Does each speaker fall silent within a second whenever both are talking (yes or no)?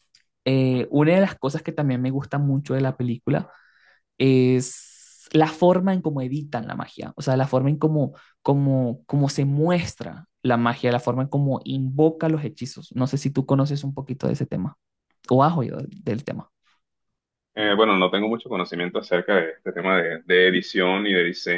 yes